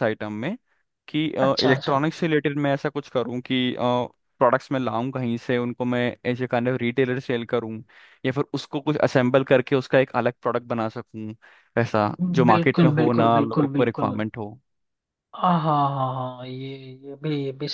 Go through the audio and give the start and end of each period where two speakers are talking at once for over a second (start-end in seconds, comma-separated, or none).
12.5-14.2